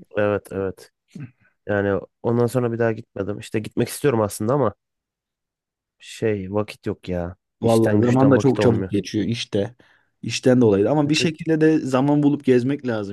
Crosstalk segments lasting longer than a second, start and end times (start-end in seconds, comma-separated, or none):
7.6-8.9